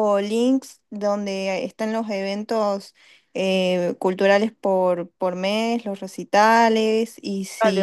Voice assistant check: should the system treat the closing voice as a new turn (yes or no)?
yes